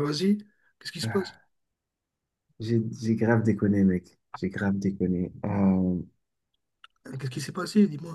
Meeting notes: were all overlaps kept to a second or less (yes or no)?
yes